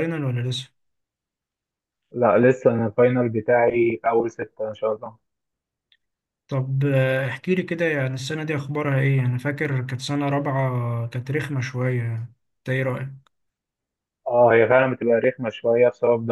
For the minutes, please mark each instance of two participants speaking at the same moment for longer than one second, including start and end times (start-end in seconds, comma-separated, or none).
none